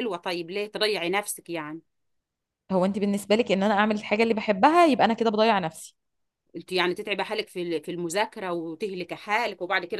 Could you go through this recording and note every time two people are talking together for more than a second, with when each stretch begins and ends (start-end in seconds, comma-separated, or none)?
none